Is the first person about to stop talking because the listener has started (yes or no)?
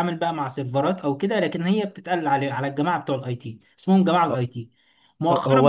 yes